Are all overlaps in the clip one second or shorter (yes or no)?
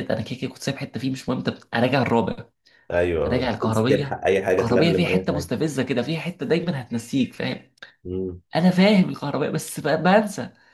no